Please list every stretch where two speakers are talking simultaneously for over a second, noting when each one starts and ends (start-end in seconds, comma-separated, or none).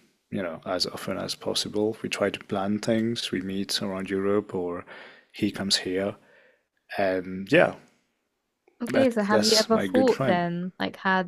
8.9-10.5